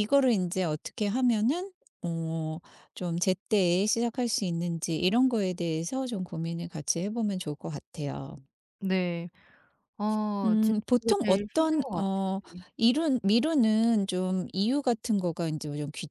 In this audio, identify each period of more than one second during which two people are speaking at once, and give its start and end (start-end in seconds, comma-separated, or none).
10.4-12.1